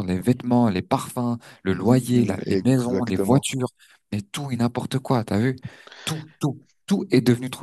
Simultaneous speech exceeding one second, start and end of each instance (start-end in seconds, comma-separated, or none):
1.7-3.5